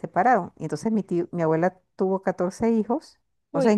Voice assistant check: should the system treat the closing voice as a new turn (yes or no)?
no